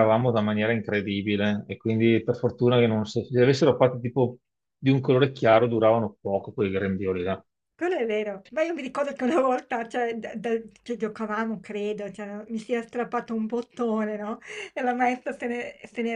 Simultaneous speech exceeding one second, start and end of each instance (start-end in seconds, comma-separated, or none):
none